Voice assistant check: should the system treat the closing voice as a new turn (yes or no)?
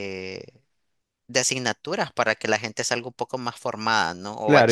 yes